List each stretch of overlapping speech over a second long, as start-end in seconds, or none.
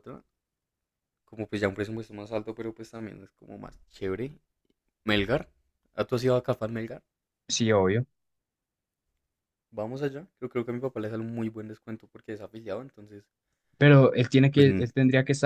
none